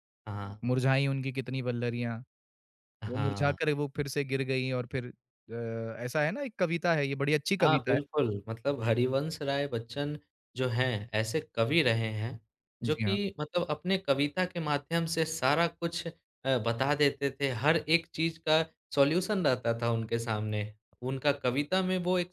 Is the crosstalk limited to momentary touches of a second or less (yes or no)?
yes